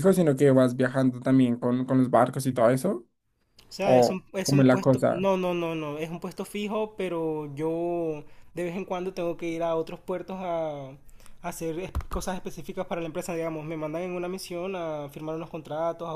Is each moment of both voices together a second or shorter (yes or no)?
no